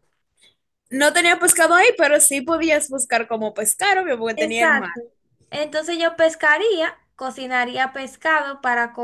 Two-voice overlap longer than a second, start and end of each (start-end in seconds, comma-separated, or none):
none